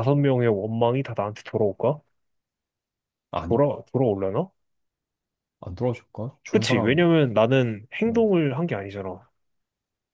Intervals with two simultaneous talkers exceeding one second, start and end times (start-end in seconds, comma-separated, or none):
none